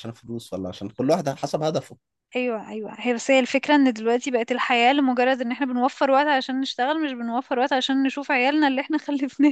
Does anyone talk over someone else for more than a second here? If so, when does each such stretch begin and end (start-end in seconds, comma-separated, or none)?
none